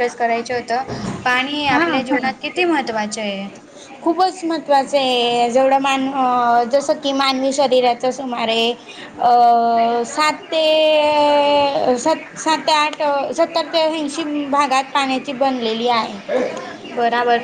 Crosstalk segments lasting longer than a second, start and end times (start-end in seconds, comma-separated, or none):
none